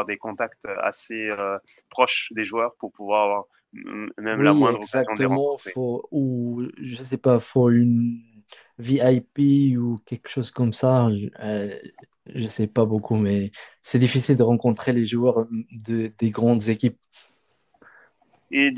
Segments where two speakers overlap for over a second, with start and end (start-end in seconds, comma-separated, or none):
4.3-5.8